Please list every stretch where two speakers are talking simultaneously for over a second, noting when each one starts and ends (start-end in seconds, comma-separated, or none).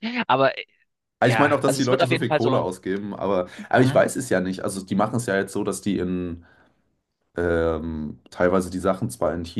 1.3-2.6